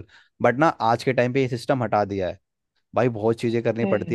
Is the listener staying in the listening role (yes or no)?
yes